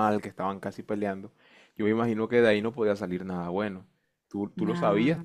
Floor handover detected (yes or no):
no